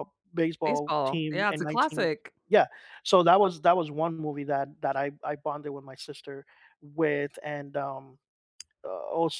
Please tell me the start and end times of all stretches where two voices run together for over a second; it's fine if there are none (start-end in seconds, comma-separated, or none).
0.6-2.1